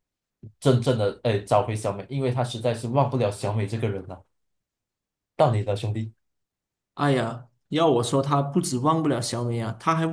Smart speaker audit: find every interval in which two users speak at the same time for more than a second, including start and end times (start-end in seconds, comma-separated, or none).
none